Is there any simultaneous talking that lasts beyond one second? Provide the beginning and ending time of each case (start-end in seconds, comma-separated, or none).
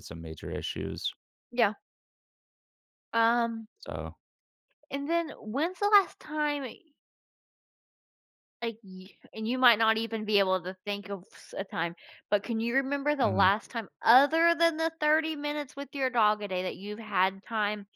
none